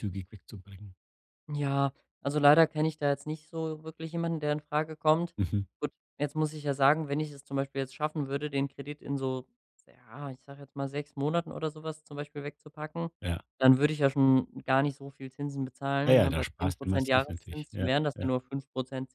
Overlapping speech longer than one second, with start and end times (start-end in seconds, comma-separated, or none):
16.0-18.3